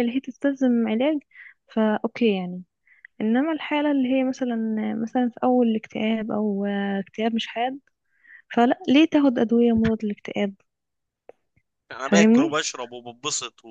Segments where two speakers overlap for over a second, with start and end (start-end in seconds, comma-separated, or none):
none